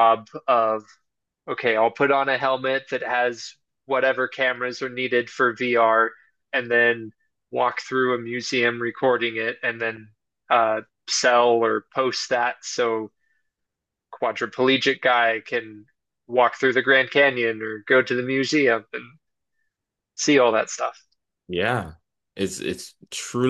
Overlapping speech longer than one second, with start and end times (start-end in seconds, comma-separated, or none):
none